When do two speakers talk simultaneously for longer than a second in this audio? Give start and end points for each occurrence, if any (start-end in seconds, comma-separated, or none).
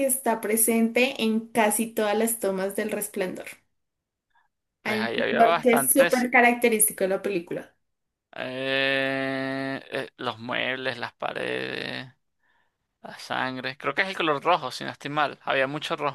4.8-6.3